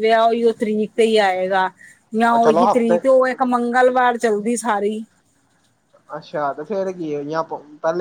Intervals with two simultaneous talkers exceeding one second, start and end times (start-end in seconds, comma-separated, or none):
none